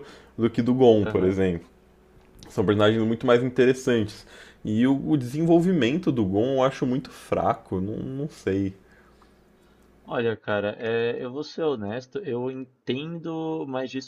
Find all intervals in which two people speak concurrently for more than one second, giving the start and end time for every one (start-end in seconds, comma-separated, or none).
none